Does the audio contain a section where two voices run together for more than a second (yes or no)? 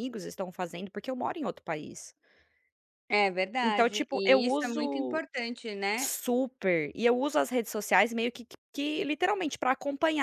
yes